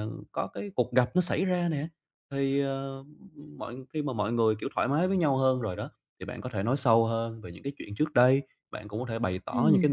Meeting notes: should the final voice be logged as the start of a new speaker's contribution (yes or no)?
no